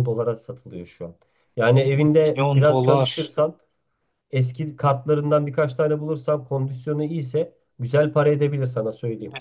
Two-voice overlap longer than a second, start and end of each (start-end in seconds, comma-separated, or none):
1.7-3.3